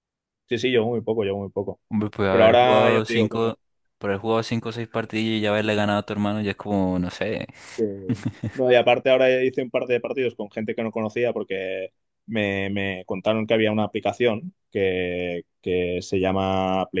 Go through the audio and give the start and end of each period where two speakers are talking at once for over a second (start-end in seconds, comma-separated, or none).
2.3-3.5